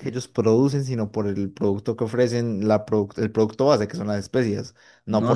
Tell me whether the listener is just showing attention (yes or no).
no